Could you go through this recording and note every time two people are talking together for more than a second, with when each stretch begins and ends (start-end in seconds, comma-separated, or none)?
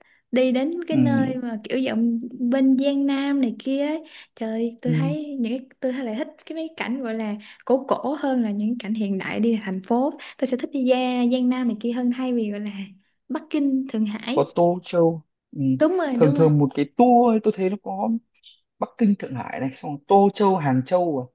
none